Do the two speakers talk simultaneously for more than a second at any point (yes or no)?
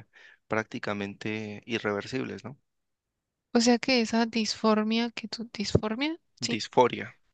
no